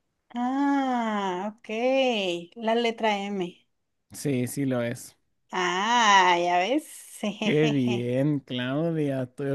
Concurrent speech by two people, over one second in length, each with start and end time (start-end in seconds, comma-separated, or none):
none